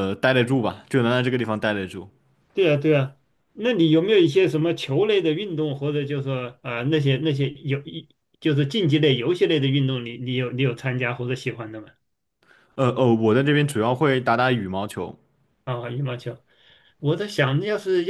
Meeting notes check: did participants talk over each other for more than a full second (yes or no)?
no